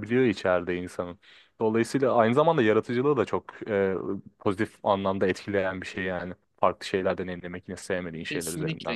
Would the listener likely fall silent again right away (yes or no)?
no